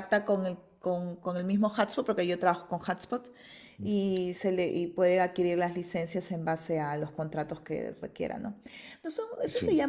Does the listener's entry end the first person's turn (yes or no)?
no